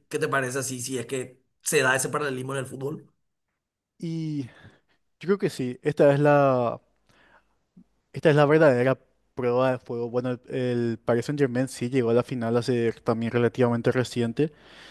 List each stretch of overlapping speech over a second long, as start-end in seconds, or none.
none